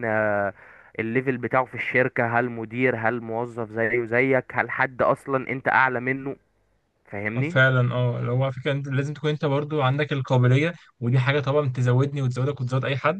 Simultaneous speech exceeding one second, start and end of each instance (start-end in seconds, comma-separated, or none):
none